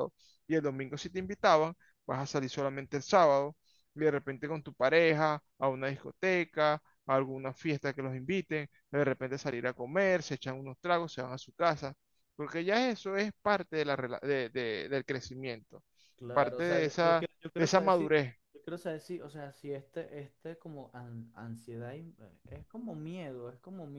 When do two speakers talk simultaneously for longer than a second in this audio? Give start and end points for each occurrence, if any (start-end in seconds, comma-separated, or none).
16.3-18.1